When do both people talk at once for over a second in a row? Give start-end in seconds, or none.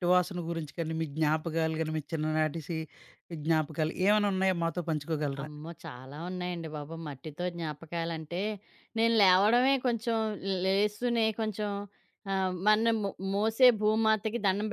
none